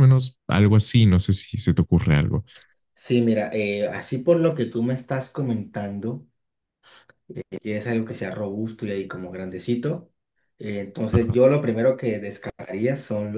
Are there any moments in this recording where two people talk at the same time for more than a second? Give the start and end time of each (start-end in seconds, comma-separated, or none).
none